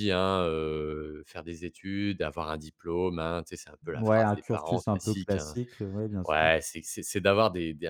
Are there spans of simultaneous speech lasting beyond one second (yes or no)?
yes